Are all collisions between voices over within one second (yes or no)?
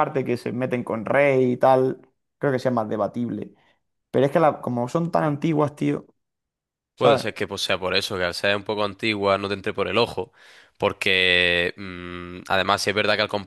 yes